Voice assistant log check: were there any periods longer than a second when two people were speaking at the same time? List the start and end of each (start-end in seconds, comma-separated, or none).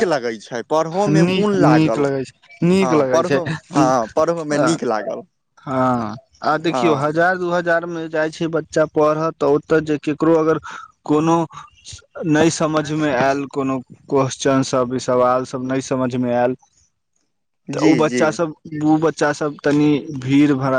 1.3-3.4